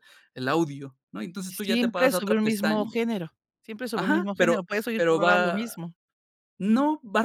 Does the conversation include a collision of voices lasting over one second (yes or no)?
yes